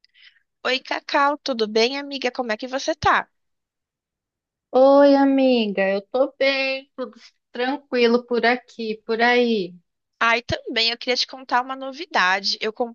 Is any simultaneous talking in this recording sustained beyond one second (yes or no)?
no